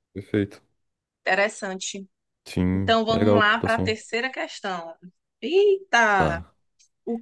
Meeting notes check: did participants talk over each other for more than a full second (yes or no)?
yes